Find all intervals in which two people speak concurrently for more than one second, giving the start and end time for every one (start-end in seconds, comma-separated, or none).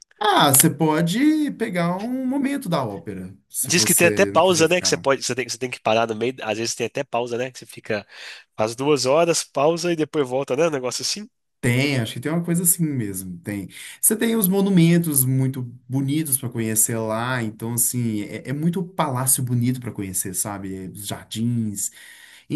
3.6-5.0